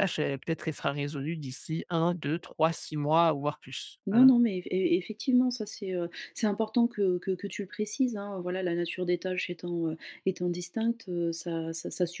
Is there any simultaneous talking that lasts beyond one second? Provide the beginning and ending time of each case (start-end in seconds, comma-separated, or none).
none